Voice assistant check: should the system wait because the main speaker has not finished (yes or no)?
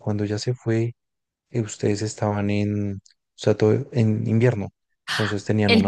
no